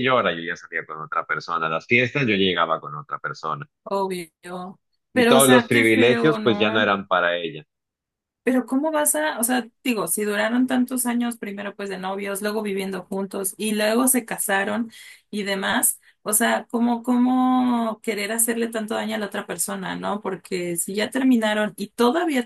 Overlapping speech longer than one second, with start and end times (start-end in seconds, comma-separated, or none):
5.1-6.9